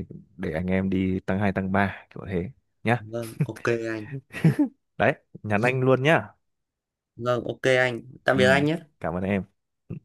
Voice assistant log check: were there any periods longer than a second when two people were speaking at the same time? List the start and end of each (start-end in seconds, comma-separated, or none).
none